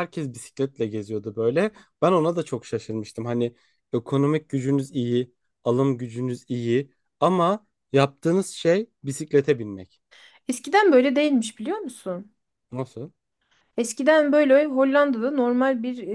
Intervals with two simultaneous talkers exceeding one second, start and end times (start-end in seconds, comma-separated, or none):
none